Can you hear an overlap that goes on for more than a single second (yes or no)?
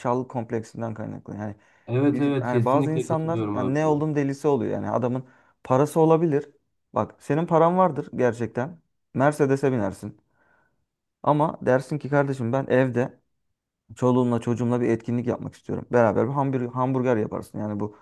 yes